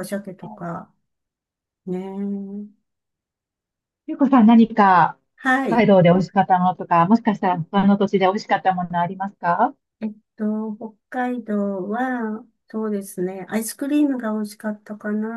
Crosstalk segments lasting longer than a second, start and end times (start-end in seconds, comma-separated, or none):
none